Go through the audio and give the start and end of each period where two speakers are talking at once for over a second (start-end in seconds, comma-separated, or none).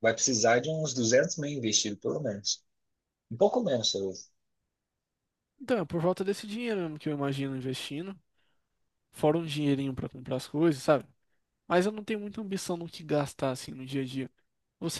none